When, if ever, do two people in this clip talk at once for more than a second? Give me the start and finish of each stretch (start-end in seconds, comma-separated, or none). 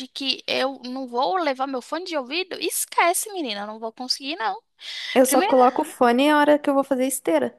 none